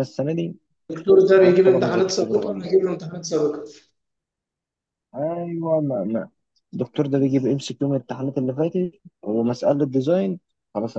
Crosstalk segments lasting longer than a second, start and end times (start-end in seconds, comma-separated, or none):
1.4-2.7